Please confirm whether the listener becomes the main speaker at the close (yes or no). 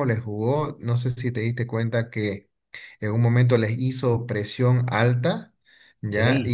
no